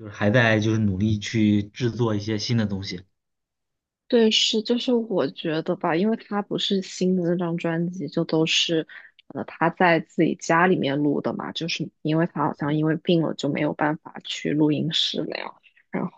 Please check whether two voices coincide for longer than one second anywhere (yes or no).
no